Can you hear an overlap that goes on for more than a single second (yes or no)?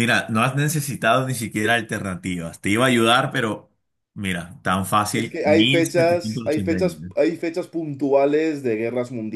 yes